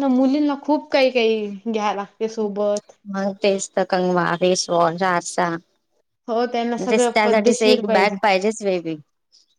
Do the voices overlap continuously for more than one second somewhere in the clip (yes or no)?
yes